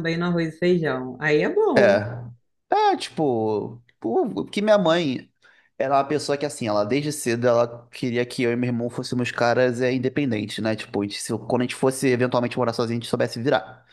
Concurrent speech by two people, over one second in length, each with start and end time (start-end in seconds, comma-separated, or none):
none